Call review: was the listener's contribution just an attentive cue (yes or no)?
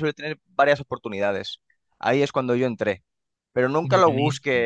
yes